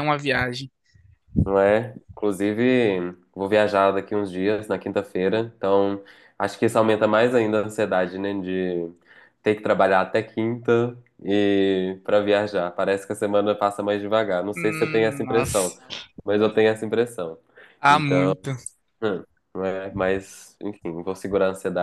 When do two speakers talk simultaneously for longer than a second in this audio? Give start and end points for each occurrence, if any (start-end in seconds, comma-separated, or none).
14.5-15.8